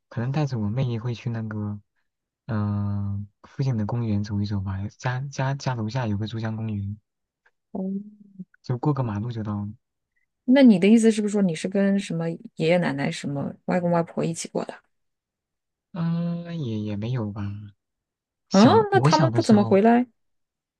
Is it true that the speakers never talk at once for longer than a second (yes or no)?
no